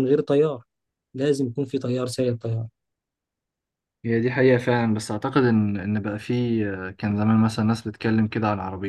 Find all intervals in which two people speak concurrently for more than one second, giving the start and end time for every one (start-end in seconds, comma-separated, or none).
none